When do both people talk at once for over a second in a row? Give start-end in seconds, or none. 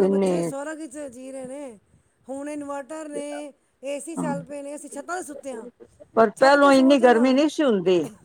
none